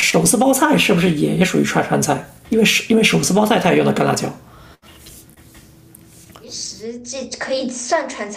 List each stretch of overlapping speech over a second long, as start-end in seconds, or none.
none